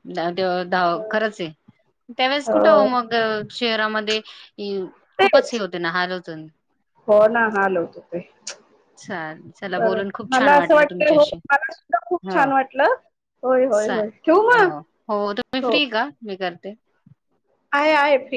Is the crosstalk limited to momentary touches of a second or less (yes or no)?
no